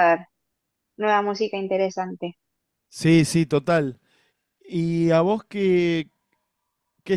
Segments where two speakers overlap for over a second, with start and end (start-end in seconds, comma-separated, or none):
none